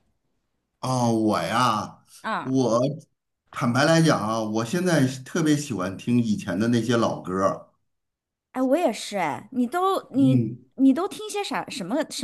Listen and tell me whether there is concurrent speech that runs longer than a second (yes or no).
no